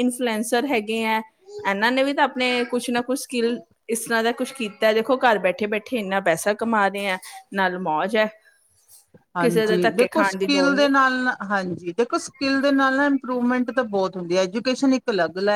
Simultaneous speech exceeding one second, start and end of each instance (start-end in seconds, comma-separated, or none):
9.4-10.9